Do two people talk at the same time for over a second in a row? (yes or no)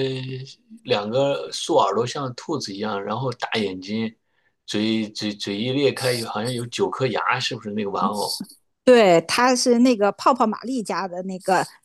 no